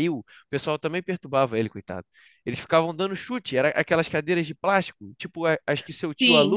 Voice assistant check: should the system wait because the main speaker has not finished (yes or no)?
yes